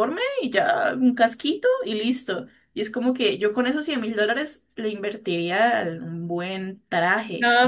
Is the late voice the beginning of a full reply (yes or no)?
yes